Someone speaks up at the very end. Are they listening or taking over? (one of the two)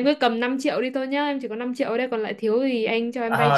taking over